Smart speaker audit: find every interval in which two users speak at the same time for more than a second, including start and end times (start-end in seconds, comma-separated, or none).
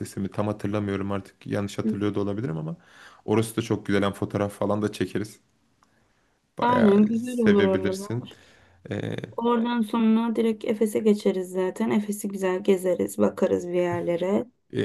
6.6-8.1